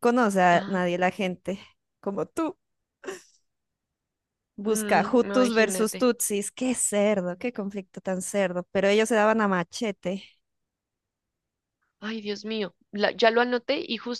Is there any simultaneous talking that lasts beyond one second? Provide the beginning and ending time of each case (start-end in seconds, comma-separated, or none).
4.6-6.1